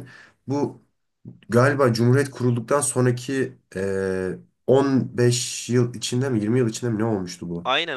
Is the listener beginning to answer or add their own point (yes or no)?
yes